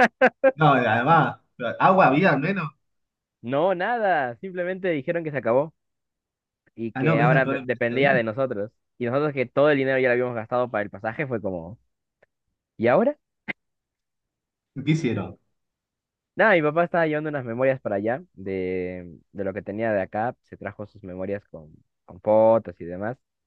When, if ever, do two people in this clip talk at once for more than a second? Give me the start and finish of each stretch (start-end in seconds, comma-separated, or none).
6.9-8.2